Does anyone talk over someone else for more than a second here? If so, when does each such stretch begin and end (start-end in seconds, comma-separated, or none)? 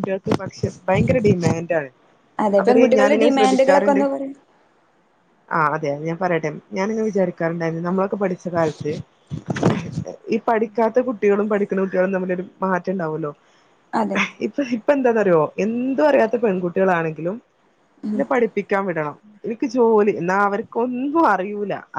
2.6-4.0